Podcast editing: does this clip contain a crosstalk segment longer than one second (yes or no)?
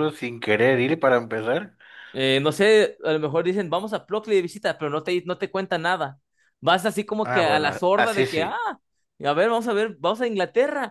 yes